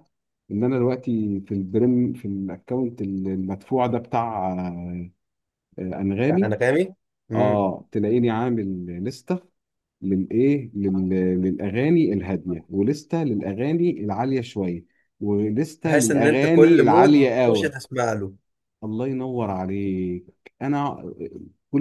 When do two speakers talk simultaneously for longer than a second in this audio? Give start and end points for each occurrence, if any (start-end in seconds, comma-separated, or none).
15.8-17.7